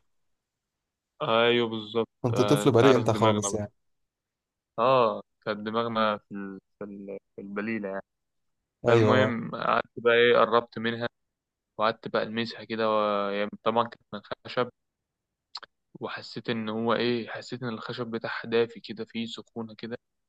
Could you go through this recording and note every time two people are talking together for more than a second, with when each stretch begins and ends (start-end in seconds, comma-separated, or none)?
2.2-3.6